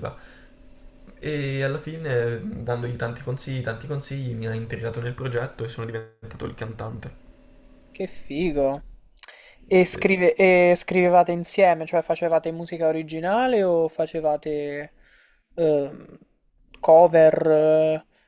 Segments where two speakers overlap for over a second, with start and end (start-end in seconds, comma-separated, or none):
none